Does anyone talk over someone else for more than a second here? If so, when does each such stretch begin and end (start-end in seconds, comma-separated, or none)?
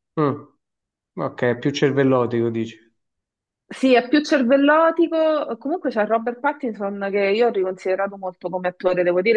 none